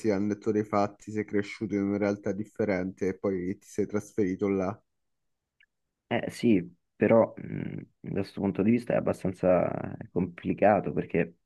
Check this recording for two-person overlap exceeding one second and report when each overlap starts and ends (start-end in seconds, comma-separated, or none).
none